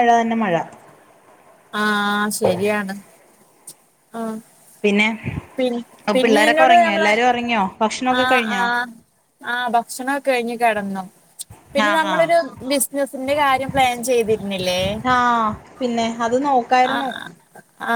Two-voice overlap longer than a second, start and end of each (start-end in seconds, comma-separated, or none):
none